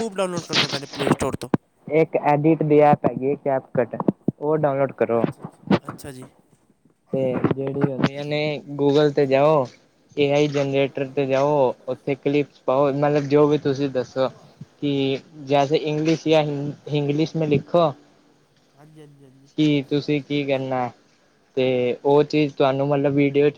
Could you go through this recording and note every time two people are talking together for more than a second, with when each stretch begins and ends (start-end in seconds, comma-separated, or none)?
none